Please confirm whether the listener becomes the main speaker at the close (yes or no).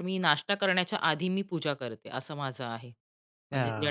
yes